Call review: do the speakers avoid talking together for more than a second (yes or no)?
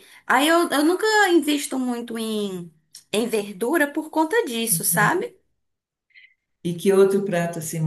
yes